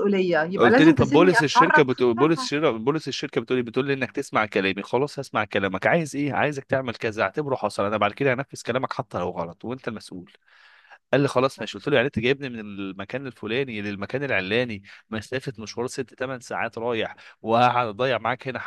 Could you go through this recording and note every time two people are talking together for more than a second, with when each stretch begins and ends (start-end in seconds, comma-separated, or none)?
0.6-2.5